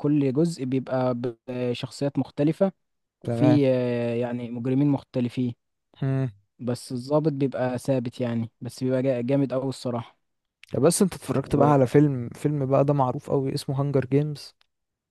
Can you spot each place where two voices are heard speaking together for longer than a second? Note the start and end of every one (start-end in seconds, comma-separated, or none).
none